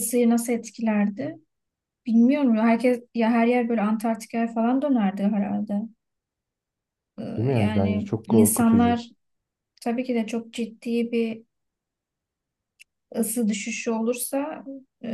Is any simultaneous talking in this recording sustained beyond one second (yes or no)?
yes